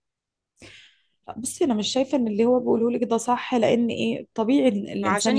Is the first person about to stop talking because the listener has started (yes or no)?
yes